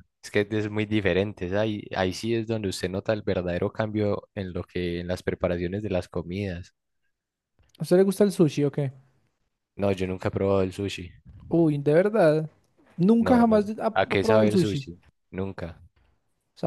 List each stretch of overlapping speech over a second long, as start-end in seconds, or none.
13.2-14.8